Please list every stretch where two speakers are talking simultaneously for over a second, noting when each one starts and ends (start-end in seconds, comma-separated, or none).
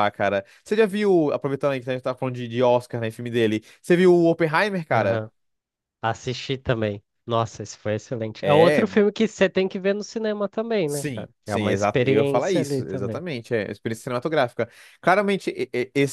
10.8-13.2